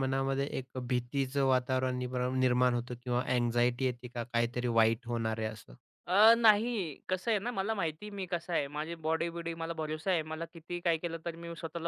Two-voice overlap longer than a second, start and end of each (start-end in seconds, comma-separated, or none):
none